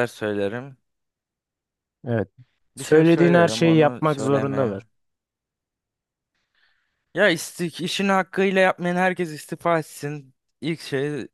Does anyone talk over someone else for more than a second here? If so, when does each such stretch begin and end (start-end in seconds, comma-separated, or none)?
2.8-4.7